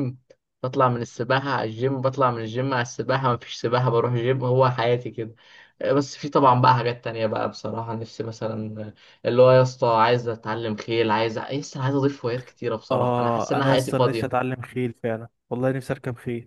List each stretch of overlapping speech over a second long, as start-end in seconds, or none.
12.9-14.4